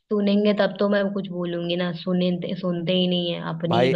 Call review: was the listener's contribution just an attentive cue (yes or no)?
no